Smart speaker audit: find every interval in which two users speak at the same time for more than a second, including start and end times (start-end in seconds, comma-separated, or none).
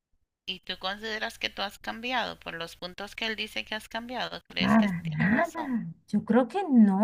4.6-5.8